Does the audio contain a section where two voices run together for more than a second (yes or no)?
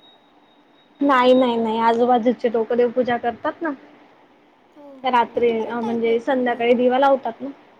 yes